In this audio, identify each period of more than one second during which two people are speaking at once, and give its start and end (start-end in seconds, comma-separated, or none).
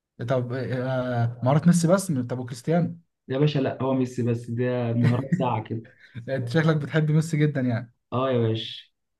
none